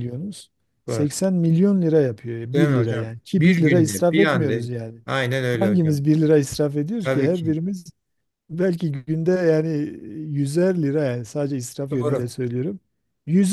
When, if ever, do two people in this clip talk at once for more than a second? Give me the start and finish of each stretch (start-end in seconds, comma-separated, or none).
2.5-4.5